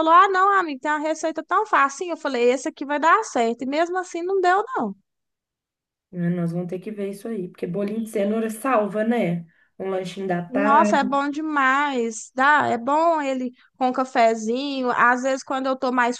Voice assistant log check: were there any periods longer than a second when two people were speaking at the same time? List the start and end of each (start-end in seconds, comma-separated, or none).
none